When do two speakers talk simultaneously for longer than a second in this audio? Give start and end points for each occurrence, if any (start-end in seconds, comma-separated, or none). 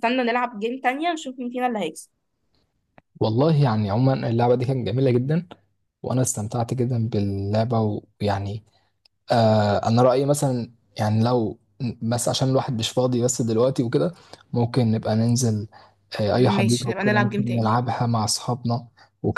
16.4-17.7